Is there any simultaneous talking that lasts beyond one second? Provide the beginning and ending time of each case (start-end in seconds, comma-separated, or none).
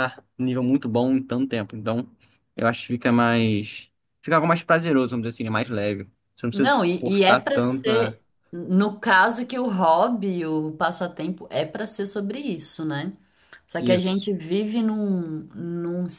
6.5-8.2